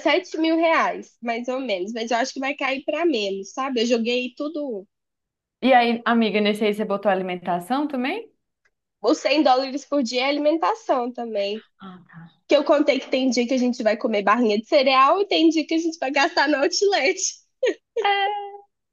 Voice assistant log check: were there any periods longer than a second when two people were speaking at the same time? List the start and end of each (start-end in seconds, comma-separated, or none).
none